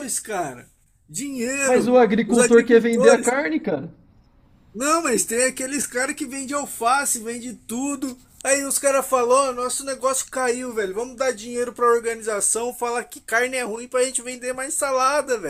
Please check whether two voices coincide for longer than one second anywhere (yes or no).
yes